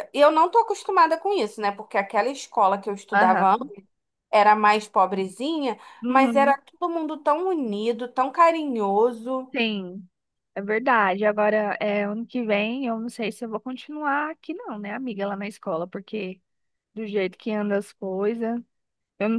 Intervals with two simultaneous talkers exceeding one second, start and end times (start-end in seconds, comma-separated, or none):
none